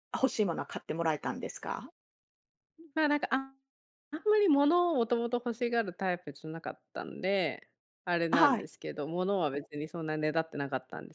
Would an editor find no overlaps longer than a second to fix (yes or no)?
yes